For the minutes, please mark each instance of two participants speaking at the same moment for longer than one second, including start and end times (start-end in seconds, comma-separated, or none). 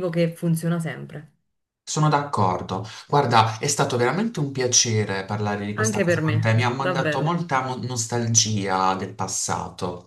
5.7-7.3